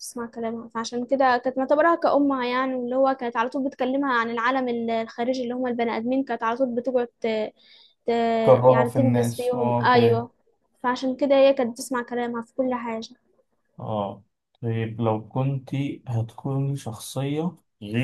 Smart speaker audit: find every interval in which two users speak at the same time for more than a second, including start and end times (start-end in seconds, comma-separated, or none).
8.7-10.3